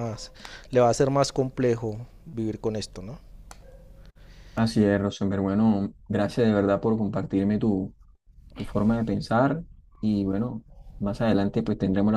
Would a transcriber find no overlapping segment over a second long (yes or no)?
yes